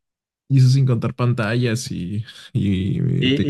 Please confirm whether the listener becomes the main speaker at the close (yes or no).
yes